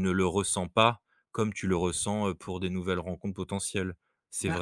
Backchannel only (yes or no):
no